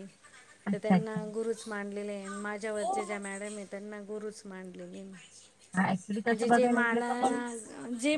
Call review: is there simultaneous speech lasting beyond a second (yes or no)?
yes